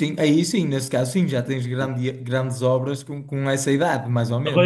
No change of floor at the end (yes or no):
no